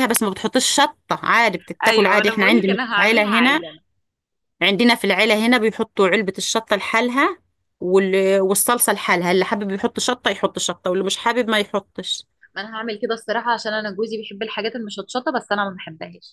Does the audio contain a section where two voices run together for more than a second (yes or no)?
yes